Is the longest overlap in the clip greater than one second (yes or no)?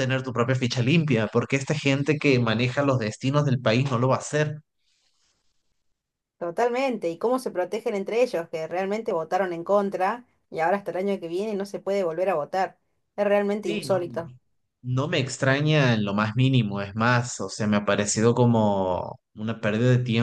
no